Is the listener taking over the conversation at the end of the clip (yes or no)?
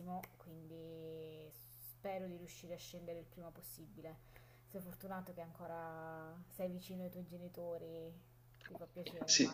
yes